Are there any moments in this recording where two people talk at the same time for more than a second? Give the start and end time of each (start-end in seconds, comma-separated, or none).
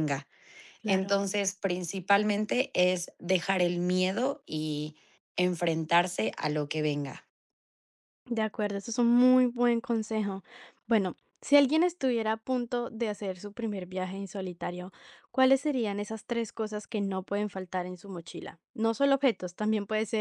none